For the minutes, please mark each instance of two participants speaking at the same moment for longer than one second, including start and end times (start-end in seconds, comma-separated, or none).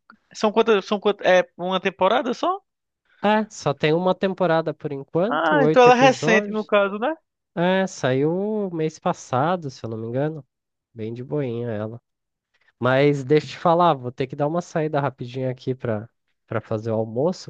5.3-6.7